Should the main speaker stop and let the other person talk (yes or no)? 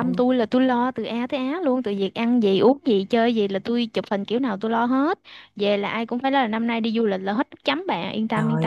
yes